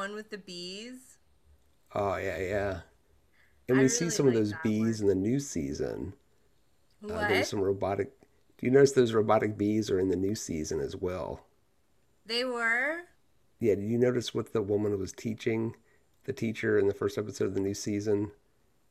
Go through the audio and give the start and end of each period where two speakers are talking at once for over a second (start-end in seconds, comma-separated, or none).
3.7-5.0